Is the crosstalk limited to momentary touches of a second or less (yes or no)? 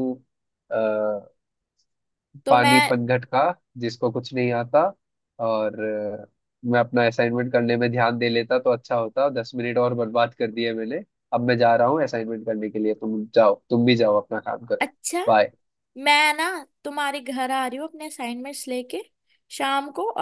yes